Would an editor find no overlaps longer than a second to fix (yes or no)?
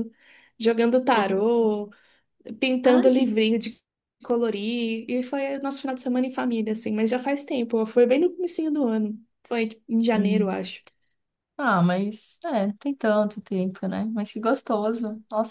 yes